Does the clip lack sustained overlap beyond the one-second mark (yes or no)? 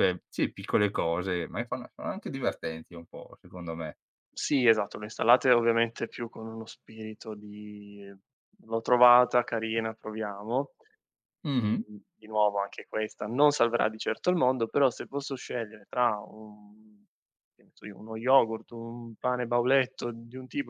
yes